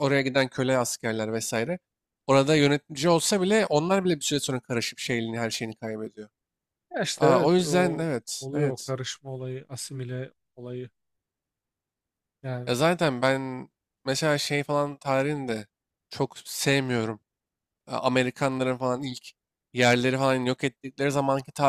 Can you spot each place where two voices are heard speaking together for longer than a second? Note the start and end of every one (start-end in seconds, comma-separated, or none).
7.2-8.9